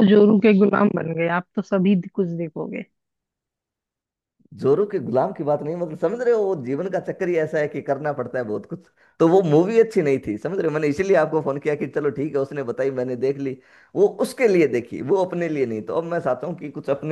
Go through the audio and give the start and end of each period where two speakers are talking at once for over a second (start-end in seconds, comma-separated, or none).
none